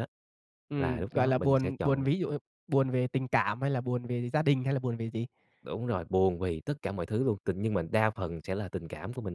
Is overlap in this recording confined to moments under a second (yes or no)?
no